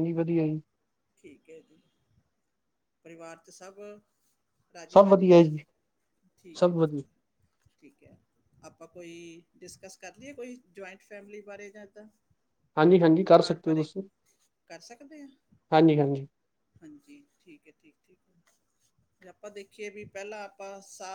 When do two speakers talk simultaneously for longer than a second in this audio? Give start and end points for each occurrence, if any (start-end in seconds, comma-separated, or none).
none